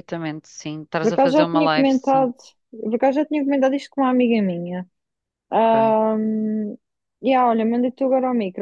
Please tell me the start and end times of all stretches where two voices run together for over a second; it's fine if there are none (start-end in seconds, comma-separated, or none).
1.0-2.3